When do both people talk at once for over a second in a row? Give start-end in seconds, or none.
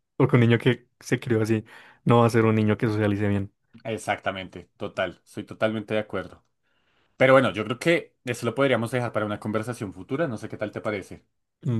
none